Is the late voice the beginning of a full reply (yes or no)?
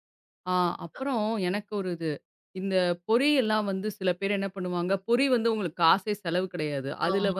no